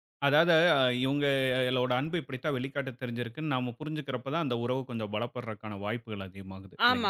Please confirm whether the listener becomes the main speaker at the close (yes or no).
yes